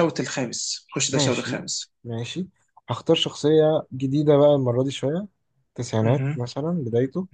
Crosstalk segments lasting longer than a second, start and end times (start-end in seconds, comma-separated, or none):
none